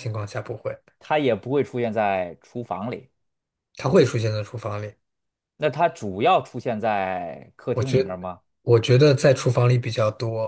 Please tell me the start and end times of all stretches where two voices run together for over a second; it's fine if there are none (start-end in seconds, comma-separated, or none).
none